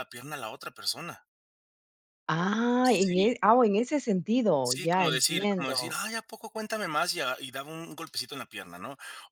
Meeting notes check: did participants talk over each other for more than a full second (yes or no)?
yes